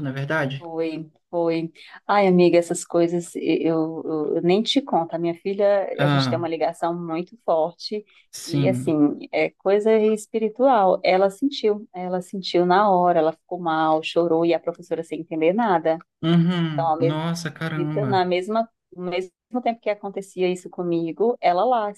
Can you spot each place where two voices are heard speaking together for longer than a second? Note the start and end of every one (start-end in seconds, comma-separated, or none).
16.7-18.2